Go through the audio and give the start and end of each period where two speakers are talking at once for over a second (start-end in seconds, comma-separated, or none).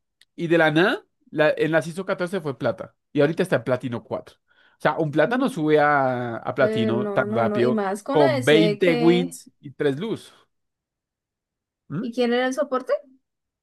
6.6-9.4